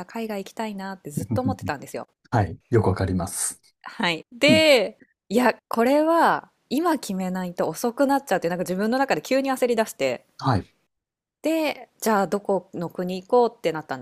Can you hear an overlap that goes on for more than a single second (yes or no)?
no